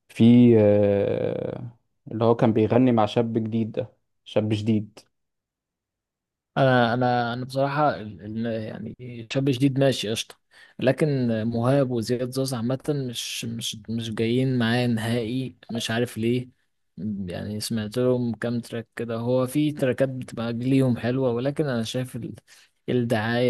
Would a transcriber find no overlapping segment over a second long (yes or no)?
yes